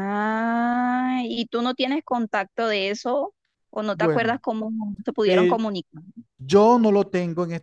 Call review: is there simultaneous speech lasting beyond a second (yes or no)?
no